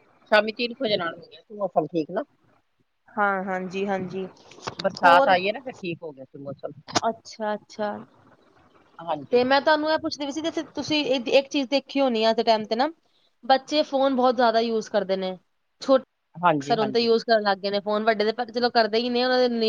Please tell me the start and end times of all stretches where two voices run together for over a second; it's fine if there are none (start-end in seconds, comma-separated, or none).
none